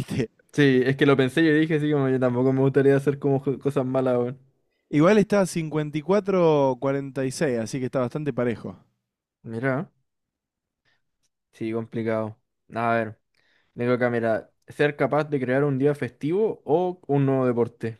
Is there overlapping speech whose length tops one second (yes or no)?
no